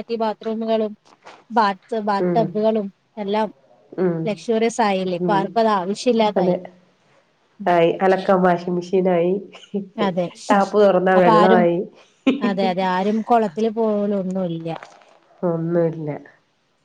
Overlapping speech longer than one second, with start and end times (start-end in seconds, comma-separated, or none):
none